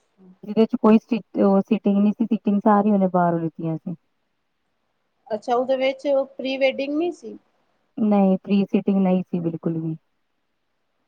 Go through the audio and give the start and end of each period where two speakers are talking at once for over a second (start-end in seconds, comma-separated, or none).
none